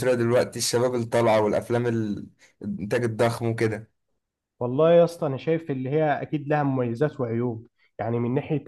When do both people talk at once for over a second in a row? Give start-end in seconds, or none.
none